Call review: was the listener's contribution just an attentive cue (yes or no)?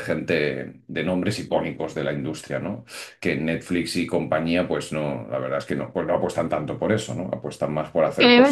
no